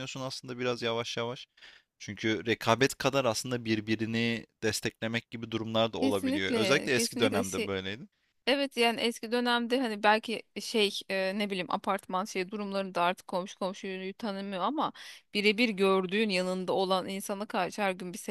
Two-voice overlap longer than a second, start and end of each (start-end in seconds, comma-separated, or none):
6.0-7.7